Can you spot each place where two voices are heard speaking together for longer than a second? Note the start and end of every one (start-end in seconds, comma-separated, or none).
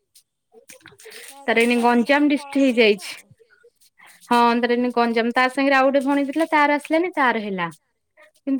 1.5-3.1